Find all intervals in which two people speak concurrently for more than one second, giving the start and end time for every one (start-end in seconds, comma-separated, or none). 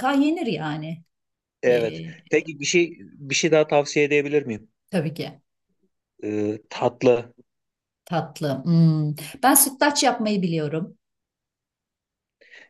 none